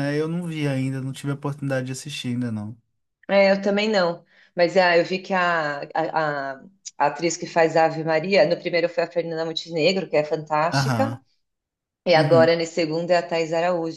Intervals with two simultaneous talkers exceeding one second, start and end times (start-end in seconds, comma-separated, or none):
none